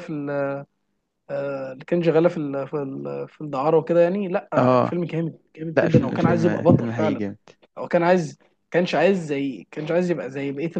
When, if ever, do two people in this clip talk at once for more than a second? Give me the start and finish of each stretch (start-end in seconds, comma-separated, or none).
5.8-7.2